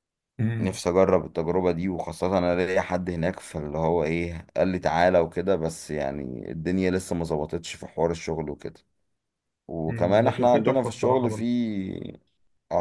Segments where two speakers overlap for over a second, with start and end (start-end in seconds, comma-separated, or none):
9.9-11.4